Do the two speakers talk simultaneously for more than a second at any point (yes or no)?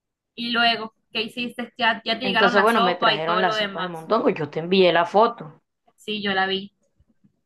yes